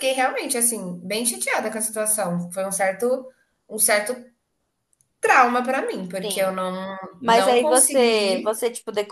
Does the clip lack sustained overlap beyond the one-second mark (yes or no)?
no